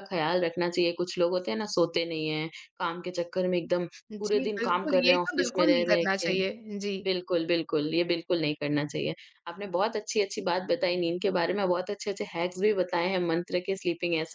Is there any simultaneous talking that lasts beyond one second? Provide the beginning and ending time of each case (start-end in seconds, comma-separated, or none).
4.2-6.3